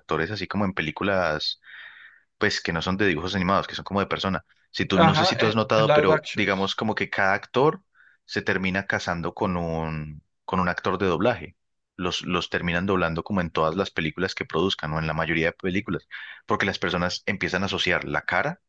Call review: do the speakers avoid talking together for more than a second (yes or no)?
no